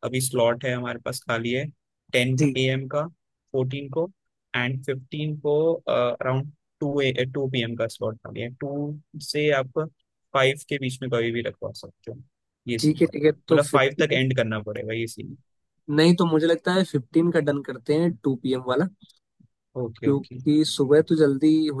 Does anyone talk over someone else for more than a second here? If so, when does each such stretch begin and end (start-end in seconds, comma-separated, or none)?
12.8-14.2